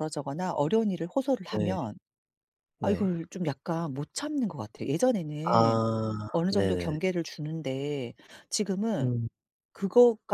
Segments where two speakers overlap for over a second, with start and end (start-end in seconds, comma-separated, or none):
none